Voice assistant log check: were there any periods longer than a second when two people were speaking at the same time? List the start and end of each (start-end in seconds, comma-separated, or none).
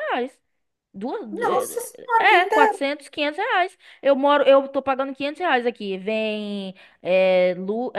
1.3-2.8